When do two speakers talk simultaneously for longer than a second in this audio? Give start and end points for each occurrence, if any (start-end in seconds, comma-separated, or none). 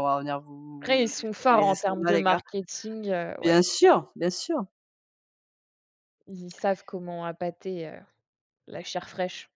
0.8-2.4